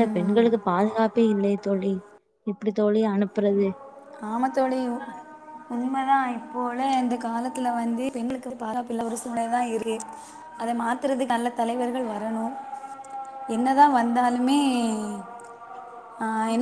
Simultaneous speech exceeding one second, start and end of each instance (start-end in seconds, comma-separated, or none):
none